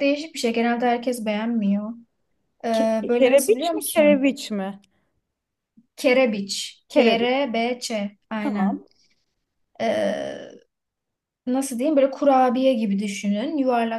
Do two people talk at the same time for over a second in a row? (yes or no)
yes